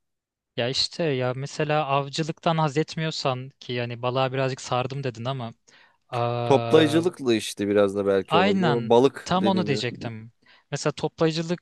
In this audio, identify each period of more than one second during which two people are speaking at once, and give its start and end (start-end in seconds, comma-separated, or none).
8.3-9.8